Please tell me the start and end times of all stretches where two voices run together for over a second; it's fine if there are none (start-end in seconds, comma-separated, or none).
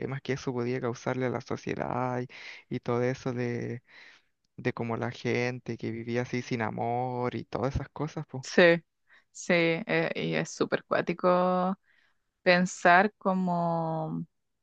none